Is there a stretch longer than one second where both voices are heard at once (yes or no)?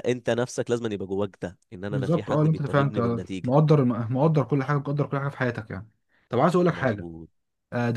yes